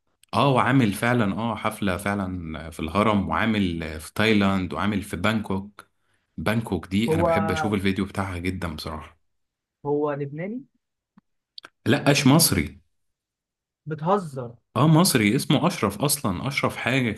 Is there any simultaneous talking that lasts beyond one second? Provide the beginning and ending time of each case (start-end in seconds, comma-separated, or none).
none